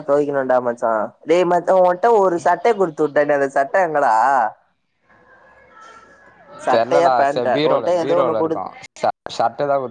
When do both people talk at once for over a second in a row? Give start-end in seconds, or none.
6.7-8.6